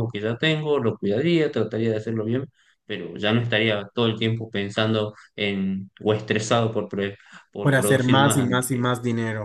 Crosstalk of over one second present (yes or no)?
yes